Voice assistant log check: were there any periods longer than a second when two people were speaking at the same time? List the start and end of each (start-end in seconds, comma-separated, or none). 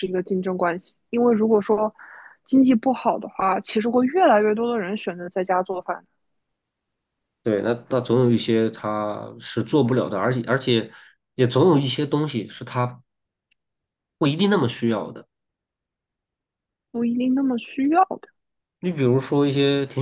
none